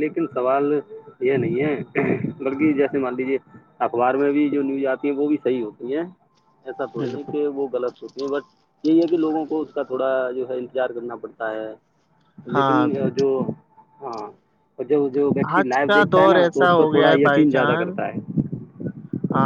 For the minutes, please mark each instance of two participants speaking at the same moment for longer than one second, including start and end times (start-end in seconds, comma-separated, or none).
15.6-18.0